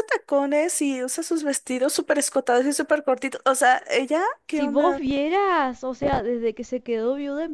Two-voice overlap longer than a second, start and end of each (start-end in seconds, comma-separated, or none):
none